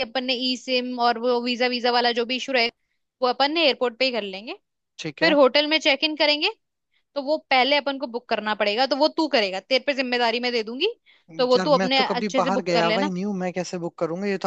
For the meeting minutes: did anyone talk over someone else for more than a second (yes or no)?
yes